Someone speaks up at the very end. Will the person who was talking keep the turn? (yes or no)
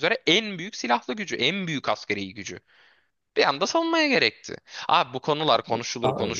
yes